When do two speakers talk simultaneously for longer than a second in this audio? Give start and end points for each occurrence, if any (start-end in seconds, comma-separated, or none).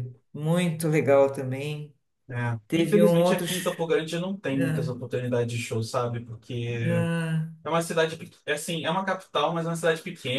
2.7-3.9